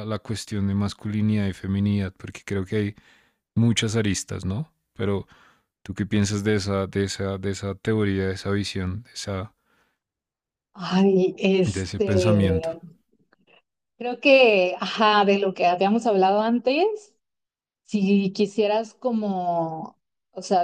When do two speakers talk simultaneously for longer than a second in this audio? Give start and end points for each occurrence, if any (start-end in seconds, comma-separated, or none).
none